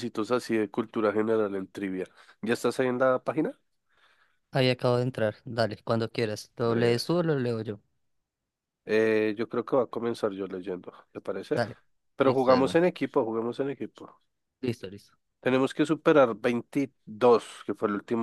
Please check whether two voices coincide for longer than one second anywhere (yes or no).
no